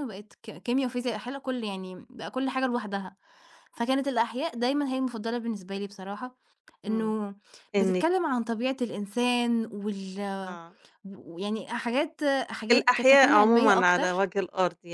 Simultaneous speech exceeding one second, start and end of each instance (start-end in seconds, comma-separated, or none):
12.7-14.2